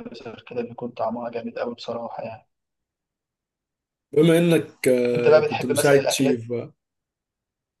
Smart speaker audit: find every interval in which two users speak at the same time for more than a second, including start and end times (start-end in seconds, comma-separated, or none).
5.1-6.5